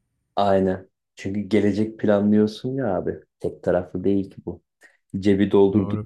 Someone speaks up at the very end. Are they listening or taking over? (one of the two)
listening